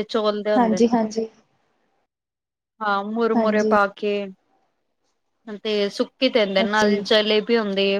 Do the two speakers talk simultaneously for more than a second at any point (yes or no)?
no